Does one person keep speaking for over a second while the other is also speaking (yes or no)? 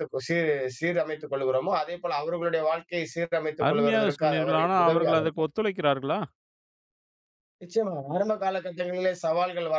yes